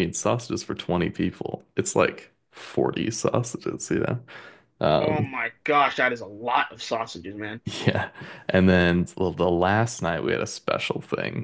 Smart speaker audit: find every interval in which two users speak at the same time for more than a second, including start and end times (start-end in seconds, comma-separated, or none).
none